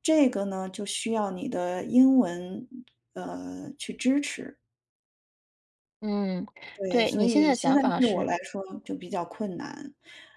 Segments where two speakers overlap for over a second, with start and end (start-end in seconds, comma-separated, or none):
6.9-8.3